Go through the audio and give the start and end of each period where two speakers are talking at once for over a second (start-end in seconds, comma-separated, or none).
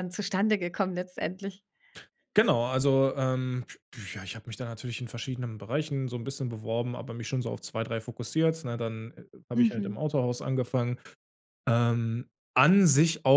none